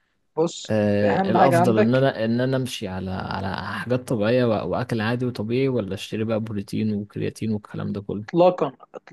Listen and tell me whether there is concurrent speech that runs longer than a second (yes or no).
yes